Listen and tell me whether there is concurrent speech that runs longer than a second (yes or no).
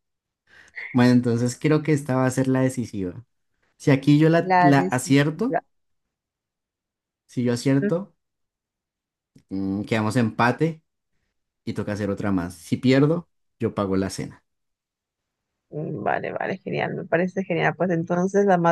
yes